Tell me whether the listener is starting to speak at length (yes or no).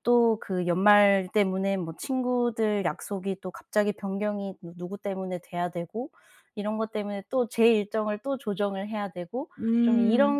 no